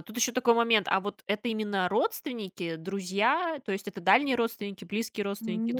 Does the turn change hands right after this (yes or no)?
yes